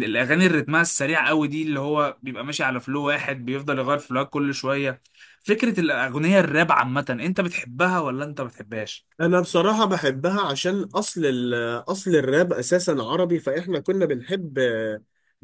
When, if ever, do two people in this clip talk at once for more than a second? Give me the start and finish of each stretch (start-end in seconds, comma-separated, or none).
none